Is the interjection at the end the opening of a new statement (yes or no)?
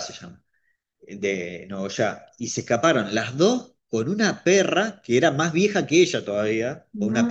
no